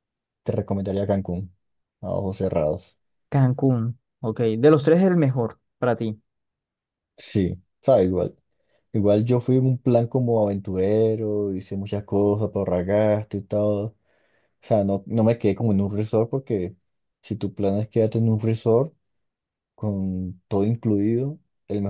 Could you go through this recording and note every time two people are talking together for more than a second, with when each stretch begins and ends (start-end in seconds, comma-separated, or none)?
none